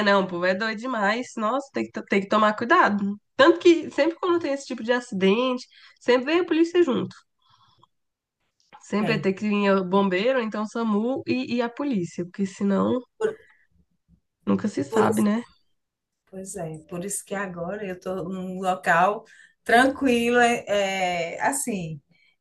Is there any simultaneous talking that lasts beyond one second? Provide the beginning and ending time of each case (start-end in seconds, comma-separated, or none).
none